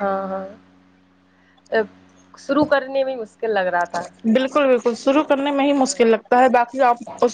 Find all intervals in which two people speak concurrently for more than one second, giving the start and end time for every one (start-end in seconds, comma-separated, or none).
none